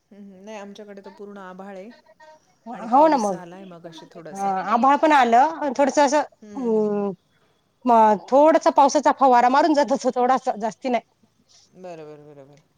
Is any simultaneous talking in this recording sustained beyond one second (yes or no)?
yes